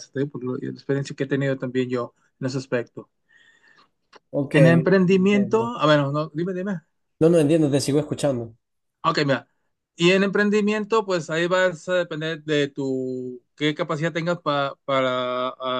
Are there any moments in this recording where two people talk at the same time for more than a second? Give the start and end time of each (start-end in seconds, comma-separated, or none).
4.5-5.7